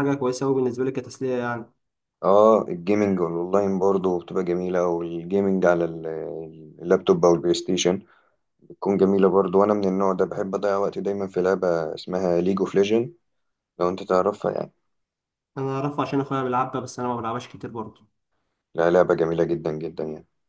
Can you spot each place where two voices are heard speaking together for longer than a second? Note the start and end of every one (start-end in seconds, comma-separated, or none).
none